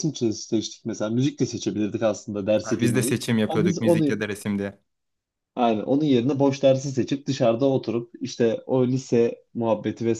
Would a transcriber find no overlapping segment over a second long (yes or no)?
no